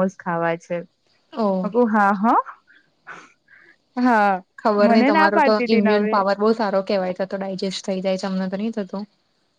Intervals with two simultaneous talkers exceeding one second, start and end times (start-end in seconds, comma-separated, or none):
none